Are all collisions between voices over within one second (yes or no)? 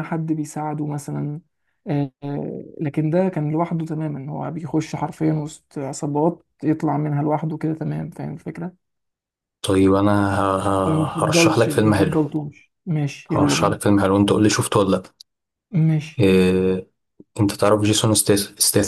no